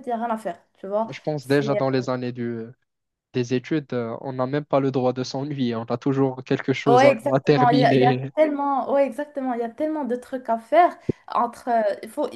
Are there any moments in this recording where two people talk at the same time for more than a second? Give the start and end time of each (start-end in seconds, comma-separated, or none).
6.9-8.3